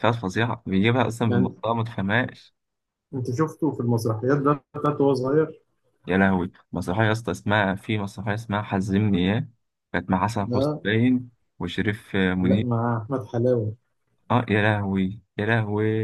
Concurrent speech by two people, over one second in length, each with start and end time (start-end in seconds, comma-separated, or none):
none